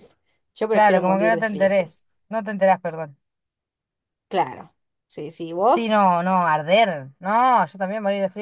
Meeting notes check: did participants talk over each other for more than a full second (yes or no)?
yes